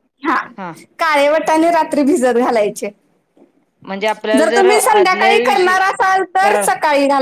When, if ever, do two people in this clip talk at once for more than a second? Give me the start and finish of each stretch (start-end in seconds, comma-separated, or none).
4.4-5.8